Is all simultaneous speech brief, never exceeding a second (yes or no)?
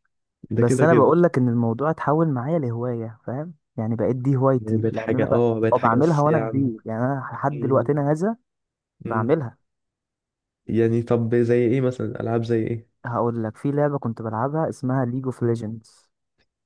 no